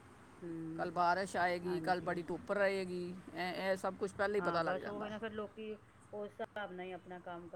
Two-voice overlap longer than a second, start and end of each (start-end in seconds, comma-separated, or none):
none